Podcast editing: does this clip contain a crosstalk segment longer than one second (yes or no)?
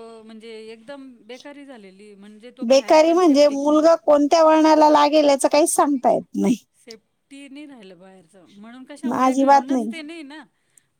yes